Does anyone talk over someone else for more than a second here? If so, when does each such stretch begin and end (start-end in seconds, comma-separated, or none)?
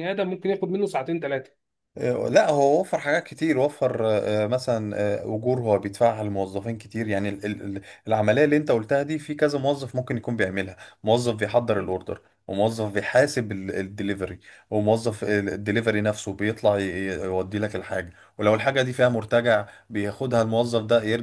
none